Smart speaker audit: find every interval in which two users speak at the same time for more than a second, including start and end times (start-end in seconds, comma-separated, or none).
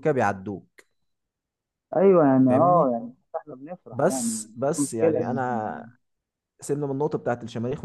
3.9-5.4